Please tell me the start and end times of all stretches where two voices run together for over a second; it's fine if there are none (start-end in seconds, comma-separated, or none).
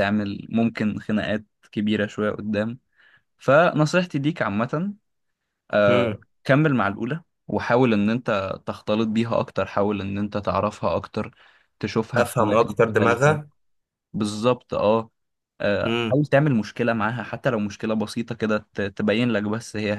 12.2-13.4